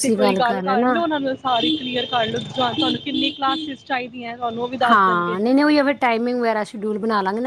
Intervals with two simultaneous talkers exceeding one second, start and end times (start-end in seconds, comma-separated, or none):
none